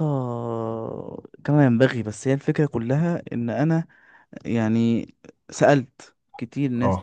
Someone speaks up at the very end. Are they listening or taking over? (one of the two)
listening